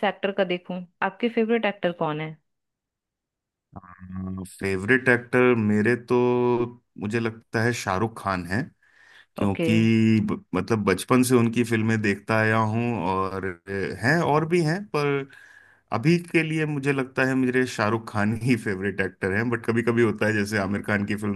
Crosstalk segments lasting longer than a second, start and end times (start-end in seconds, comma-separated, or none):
none